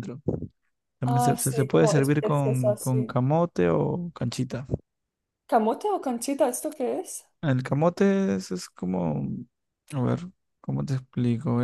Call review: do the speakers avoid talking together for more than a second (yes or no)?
no